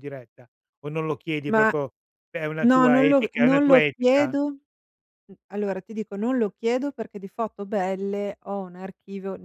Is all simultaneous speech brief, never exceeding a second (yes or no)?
no